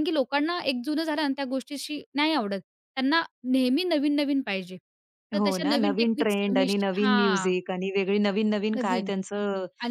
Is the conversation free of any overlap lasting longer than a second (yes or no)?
no